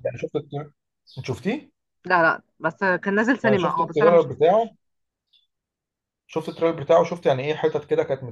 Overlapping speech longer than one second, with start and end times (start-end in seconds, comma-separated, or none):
3.4-4.7